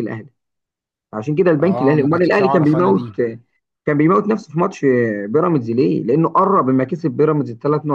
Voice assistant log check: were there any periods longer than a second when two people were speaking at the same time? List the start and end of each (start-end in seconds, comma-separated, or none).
1.6-3.0